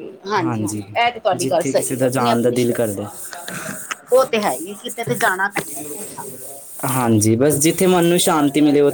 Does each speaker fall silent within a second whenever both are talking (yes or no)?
no